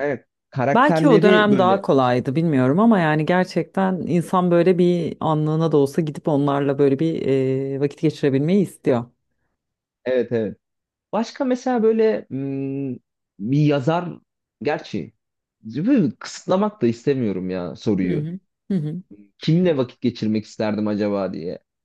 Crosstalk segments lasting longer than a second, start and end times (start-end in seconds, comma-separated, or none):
0.7-2.4